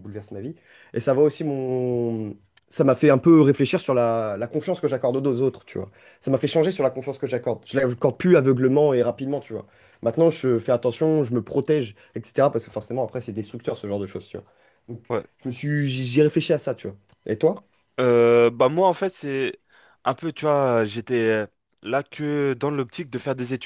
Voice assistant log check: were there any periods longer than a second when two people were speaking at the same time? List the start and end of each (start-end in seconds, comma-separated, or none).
none